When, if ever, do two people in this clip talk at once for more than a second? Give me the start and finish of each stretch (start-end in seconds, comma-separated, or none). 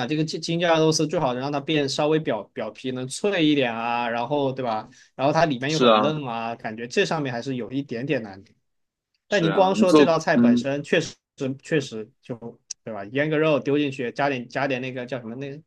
9.3-10.7